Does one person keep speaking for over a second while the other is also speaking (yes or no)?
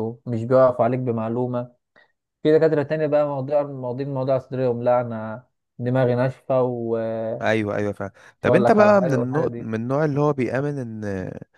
yes